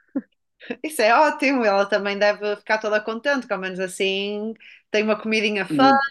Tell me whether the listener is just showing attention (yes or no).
yes